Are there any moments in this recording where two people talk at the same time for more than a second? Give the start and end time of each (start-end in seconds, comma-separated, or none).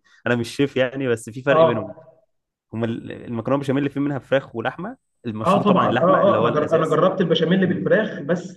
5.5-7.0